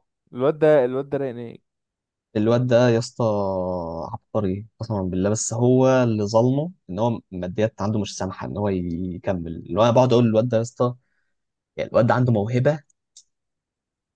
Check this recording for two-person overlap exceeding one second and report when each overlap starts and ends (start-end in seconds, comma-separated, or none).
none